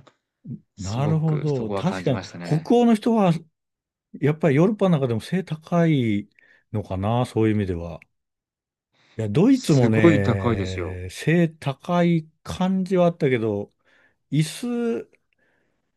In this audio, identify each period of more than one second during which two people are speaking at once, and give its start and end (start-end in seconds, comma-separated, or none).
0.8-2.7, 9.5-11.0